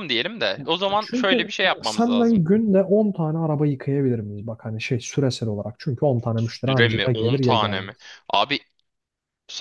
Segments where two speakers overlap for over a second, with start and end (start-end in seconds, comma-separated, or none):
1.0-2.5, 6.7-8.0